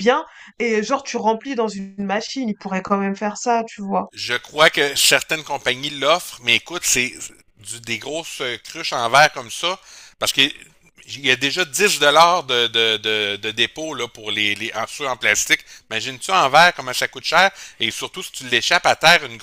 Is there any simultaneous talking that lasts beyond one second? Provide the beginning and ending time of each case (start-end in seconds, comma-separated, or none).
none